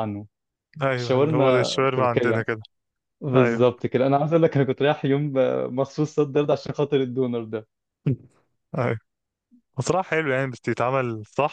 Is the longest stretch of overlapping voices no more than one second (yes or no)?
no